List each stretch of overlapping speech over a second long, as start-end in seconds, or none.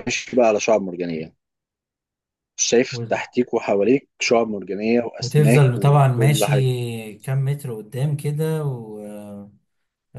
5.2-6.7